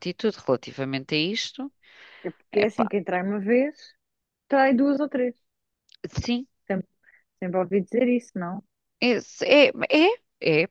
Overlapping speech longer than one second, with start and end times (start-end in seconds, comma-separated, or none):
none